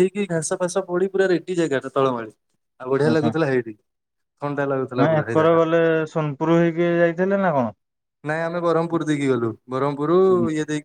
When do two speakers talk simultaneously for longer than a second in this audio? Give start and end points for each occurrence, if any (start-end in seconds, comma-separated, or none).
none